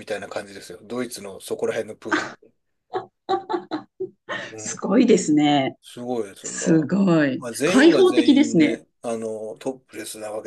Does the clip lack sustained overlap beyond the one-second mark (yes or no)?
no